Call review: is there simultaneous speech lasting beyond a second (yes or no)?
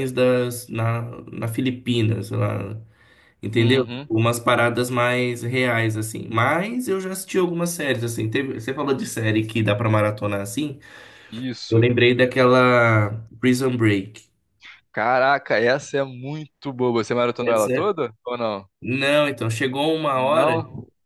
no